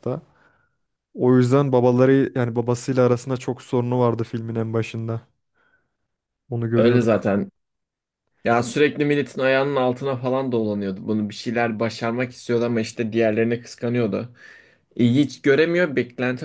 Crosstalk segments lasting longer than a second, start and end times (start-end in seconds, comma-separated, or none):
none